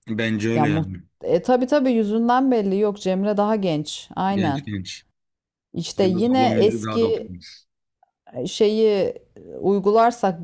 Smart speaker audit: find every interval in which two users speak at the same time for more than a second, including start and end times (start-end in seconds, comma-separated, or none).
6.0-7.3